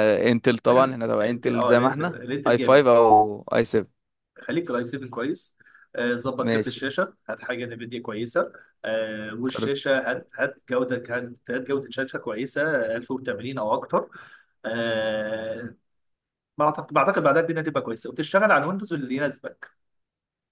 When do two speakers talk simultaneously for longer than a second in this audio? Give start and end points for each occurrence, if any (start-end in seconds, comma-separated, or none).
1.2-2.9